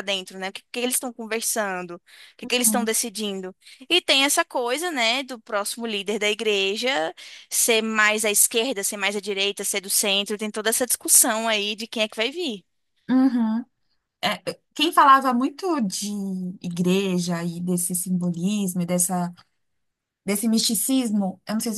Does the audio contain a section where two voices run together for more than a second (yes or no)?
no